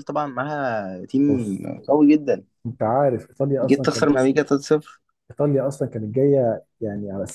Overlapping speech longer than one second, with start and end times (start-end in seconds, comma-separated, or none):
none